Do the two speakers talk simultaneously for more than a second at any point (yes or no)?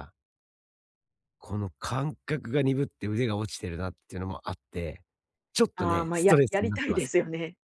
yes